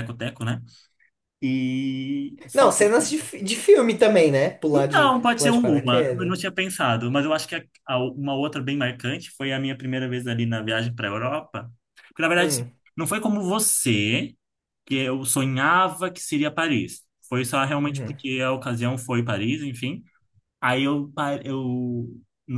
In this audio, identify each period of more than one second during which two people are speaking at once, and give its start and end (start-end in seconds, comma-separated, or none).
4.7-6.3